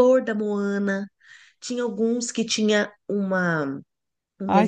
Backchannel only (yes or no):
no